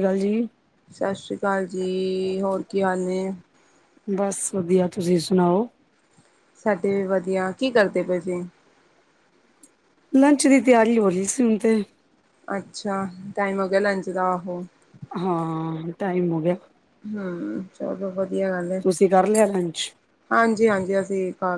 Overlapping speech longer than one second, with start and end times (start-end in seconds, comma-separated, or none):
none